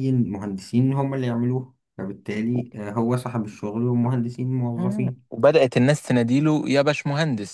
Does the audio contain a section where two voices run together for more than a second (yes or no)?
no